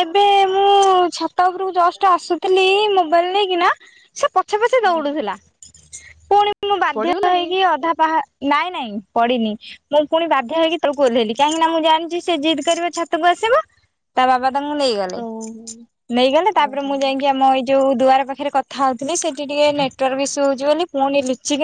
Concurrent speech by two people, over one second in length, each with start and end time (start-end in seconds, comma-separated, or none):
none